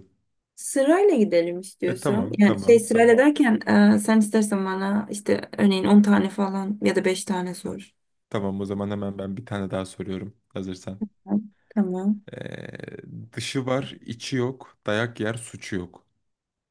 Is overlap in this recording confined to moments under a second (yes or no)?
no